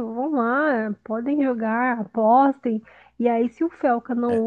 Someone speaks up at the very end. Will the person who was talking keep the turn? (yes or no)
yes